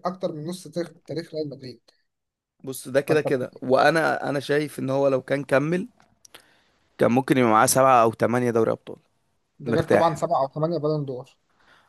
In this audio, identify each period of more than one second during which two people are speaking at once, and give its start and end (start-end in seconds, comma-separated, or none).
none